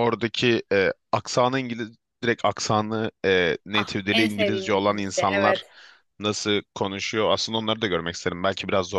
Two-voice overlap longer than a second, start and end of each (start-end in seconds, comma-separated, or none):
3.7-5.6